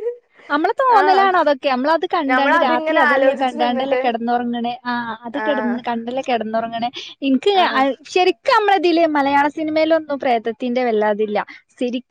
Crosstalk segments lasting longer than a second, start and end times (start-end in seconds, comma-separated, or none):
2.3-4.0